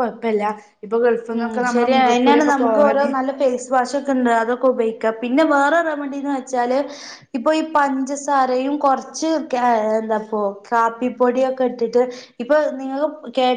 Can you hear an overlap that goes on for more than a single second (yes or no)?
yes